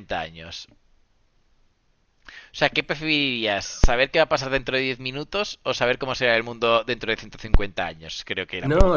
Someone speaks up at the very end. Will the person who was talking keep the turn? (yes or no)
no